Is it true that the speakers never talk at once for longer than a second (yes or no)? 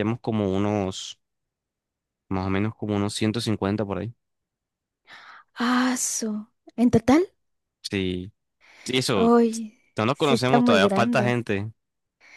no